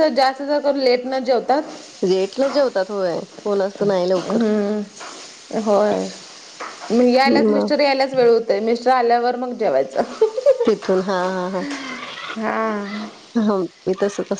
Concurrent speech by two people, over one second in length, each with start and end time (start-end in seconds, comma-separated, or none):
none